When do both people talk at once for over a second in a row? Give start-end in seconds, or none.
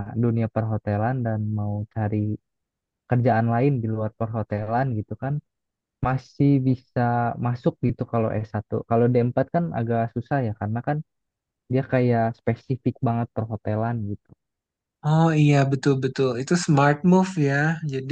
none